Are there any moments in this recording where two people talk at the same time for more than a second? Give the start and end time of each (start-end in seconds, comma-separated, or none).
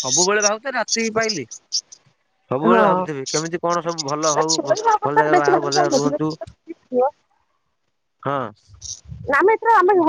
4.3-6.2